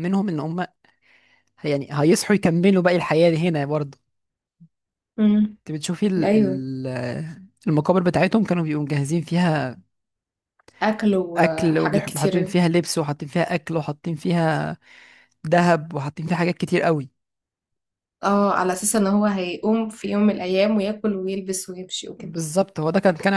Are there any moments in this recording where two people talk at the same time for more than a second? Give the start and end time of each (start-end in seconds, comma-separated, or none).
11.4-12.6